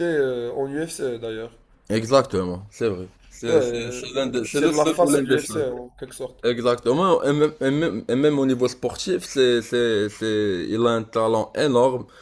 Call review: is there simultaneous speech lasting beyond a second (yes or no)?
yes